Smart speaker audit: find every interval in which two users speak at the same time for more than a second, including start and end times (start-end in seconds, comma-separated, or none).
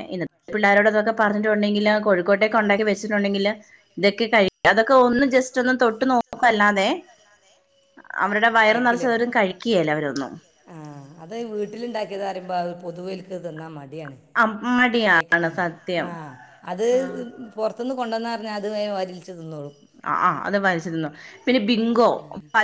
4.7-6.9